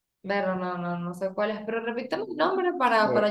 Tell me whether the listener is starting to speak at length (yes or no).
yes